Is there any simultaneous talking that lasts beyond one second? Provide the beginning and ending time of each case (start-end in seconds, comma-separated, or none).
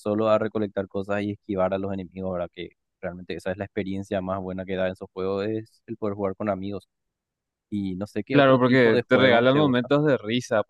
8.3-9.9